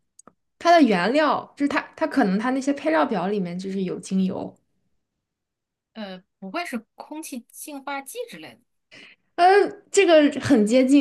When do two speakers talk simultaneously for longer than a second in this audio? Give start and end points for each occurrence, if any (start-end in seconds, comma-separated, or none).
none